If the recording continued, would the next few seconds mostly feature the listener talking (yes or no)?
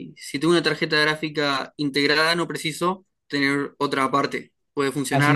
yes